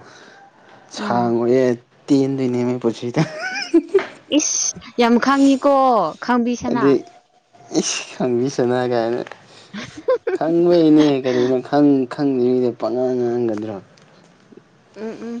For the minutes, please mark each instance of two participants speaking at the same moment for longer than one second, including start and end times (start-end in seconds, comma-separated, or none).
none